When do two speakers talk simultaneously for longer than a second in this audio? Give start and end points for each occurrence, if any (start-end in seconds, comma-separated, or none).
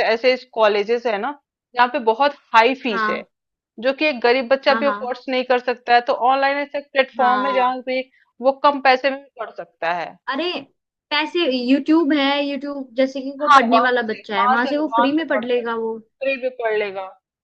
13.5-15.6